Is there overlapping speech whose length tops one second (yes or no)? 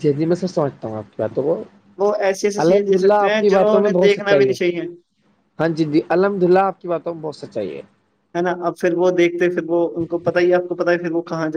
yes